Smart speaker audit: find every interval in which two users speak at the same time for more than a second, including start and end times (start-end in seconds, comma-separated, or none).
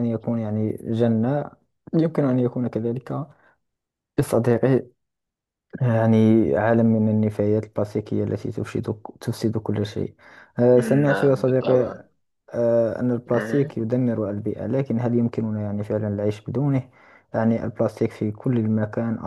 10.7-12.0